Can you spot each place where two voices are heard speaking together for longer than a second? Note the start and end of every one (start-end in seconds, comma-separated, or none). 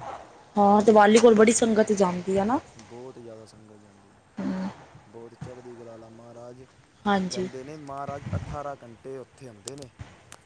none